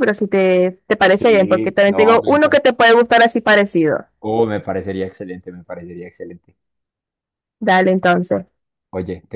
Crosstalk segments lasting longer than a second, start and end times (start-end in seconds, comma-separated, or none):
1.2-2.7